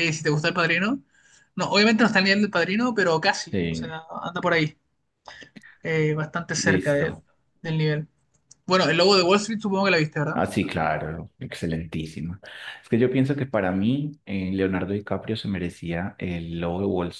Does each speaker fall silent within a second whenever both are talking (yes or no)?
yes